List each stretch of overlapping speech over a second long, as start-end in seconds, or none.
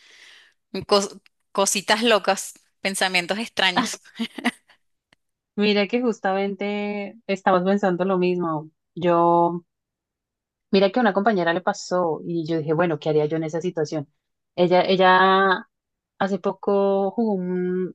none